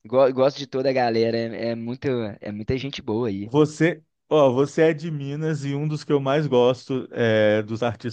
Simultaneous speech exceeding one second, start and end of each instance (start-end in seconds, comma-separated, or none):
none